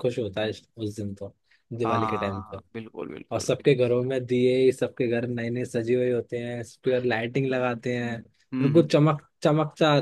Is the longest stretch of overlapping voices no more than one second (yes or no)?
yes